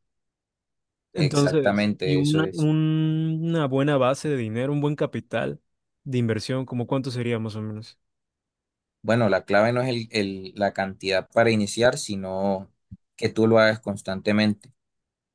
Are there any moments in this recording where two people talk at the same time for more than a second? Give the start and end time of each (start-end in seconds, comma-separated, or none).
1.1-2.7